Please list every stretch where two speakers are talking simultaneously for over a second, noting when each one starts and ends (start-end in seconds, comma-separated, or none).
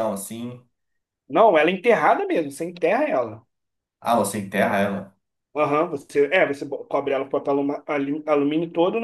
none